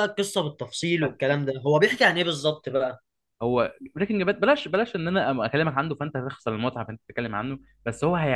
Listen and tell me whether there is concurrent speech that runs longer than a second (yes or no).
no